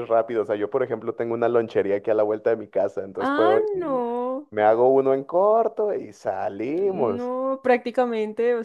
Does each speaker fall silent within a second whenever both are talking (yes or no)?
yes